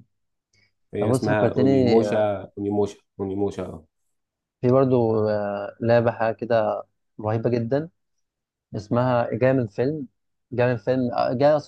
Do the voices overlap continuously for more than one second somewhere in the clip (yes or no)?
yes